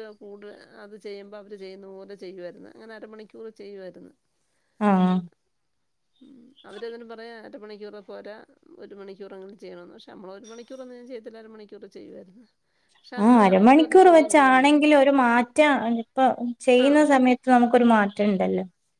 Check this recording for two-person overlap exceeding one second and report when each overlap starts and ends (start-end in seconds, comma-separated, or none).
none